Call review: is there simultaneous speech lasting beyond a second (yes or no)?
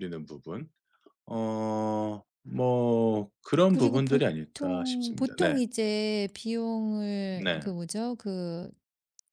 yes